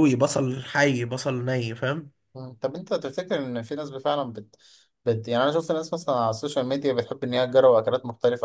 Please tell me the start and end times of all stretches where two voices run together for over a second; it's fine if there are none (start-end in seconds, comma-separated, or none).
none